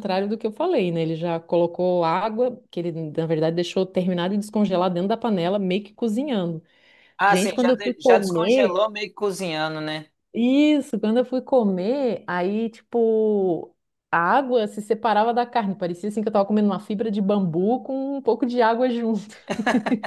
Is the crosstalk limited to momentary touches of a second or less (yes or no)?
no